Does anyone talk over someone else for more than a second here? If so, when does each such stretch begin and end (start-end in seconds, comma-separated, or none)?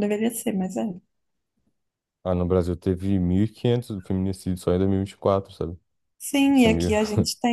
none